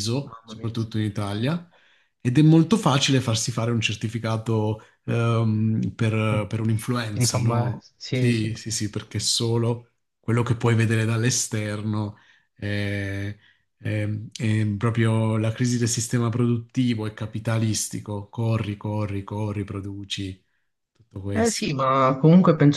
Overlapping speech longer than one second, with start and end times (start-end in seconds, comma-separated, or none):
7.1-8.5